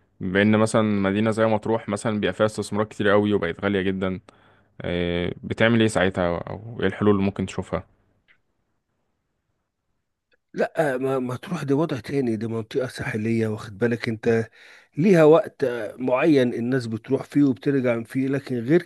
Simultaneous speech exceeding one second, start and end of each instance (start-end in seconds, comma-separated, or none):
none